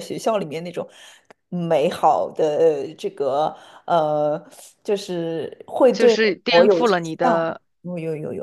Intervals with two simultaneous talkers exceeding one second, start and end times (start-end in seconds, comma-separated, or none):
5.9-7.6